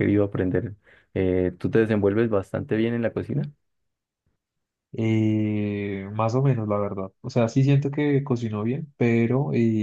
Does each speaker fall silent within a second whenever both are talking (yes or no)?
yes